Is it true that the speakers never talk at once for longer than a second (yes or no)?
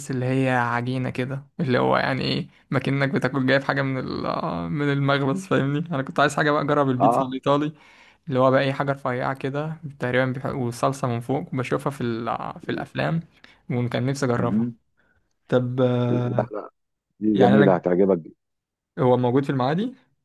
yes